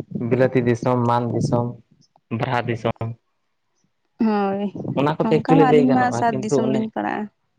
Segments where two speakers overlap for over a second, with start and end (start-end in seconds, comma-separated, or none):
5.2-6.8